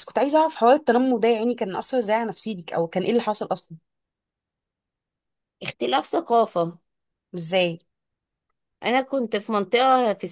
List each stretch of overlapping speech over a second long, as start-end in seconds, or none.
none